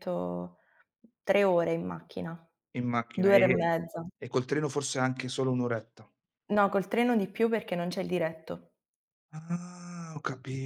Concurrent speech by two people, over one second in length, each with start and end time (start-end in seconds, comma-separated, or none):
none